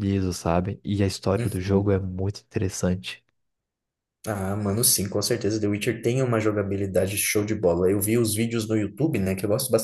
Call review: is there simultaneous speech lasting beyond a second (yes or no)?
no